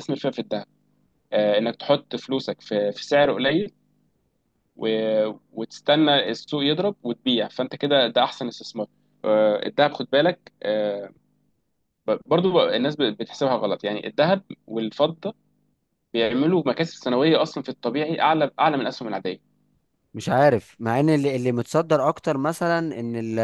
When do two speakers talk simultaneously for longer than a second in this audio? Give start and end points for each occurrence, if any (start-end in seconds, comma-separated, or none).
none